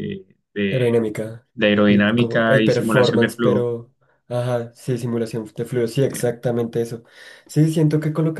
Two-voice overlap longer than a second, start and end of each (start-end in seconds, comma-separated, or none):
1.9-3.7